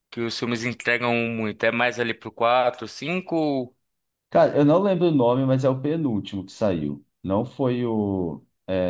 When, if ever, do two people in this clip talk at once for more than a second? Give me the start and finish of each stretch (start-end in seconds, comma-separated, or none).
none